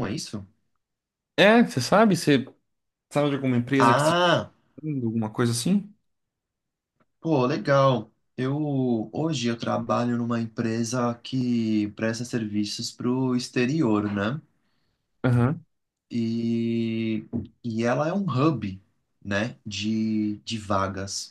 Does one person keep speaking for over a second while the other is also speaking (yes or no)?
no